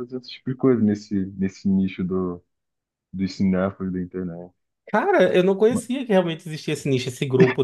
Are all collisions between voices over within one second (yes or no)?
yes